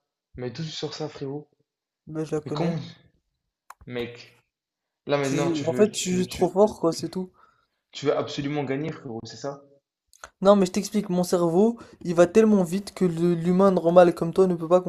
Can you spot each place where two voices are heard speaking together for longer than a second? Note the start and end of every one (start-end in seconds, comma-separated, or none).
5.2-6.5